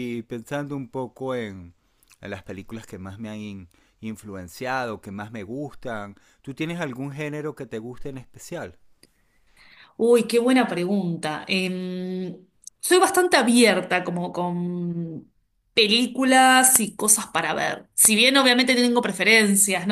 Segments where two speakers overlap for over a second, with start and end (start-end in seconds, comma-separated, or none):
none